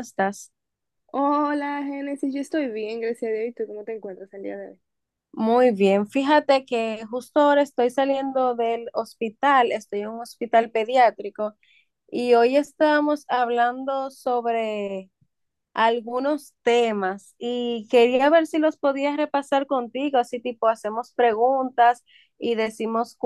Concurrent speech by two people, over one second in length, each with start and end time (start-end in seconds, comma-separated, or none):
none